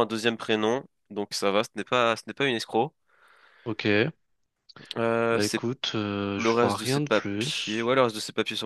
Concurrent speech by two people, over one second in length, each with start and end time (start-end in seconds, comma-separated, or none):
6.3-7.9